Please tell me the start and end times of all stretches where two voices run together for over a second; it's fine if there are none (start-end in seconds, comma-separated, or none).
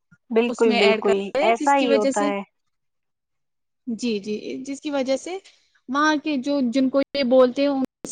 0.5-2.3